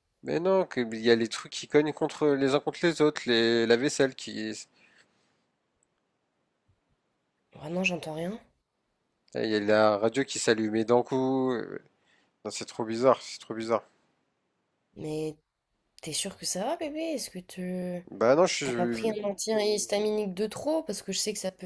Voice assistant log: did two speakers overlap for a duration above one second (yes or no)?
no